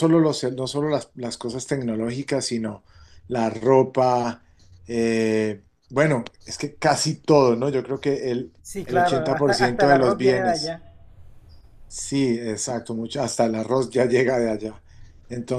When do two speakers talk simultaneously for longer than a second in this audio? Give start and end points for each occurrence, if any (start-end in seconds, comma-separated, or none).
8.6-10.8